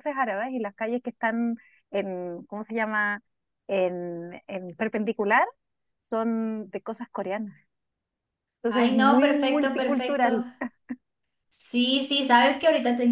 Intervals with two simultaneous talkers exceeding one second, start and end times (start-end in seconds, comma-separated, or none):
8.6-10.3